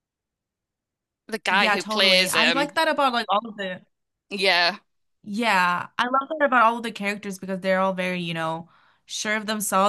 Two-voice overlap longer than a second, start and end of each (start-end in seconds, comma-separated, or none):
1.5-2.8